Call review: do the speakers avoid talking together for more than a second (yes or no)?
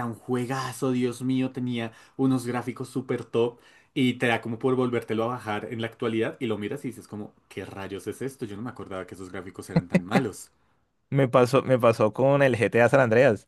yes